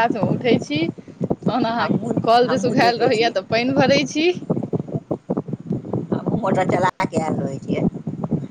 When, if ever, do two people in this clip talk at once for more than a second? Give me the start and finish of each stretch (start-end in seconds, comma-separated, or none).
1.8-3.3